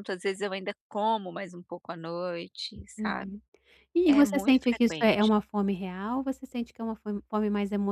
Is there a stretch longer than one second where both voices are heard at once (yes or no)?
yes